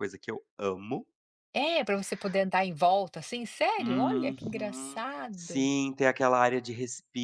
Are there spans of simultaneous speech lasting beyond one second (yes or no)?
yes